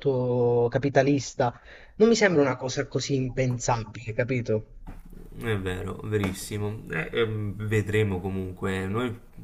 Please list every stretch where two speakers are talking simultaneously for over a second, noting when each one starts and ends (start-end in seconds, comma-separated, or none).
none